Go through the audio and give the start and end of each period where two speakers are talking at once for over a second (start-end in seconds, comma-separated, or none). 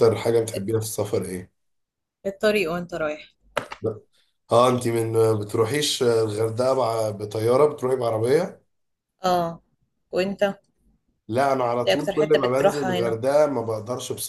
11.9-13.2